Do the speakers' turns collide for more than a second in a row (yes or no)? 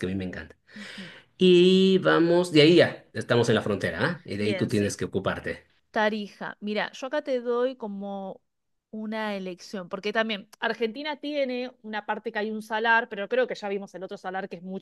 no